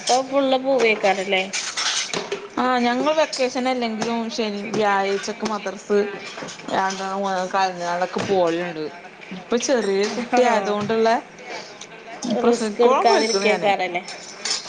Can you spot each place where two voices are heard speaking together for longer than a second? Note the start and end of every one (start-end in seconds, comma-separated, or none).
12.5-13.7